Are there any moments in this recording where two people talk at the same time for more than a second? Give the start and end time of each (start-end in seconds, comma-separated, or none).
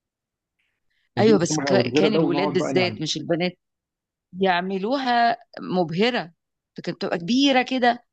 1.2-3.0